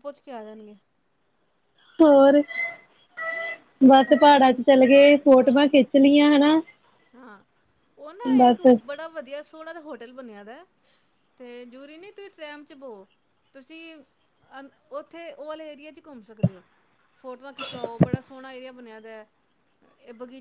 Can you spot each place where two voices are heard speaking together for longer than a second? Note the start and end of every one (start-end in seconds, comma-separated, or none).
4.1-5.6